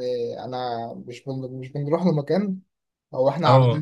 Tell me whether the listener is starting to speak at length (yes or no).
no